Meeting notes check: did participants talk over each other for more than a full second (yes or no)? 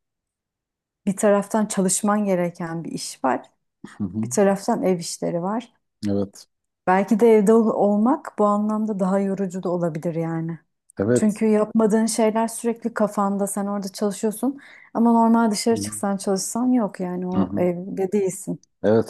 no